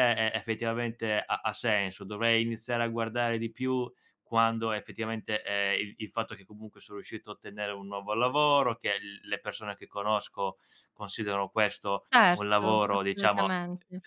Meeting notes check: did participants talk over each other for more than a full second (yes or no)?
yes